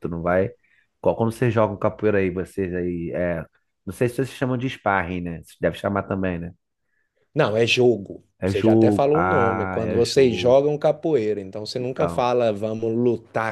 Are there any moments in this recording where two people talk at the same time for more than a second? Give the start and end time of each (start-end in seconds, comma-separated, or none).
8.4-10.6